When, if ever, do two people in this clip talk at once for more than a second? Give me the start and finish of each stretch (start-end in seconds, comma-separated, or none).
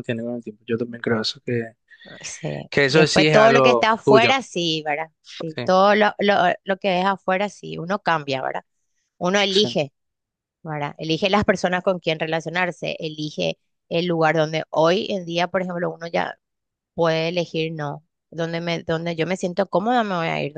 2.7-4.4